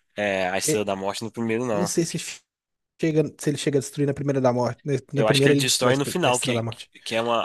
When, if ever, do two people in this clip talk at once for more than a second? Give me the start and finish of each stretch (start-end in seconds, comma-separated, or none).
5.2-6.9